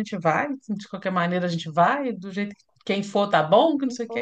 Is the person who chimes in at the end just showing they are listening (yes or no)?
no